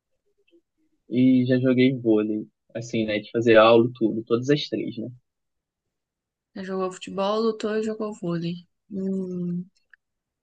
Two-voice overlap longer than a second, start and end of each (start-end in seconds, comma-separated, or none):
none